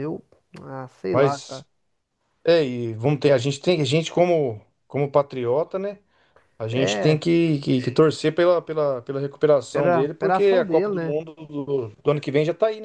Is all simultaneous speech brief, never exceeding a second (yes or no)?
no